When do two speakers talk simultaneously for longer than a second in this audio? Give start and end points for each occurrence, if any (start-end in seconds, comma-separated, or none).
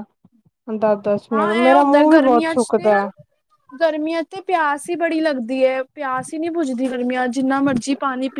1.3-2.9